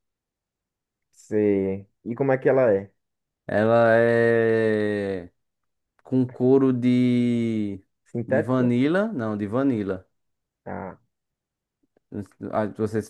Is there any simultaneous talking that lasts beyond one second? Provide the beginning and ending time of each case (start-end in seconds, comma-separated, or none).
none